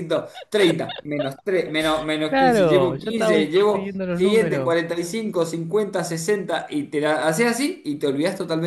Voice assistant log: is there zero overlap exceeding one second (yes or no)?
no